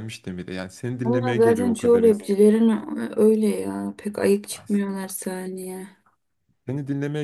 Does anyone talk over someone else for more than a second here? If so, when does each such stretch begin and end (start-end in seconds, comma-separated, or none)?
1.0-2.3